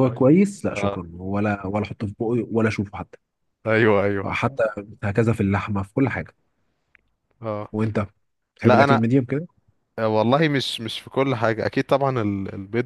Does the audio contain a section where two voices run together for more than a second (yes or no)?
no